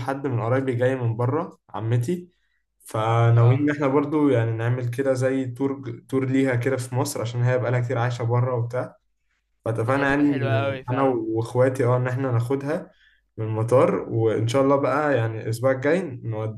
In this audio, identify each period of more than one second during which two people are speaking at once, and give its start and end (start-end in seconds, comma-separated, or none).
9.9-11.2